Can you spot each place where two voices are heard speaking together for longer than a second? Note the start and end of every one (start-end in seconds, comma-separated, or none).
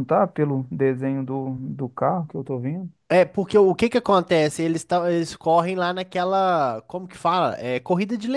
none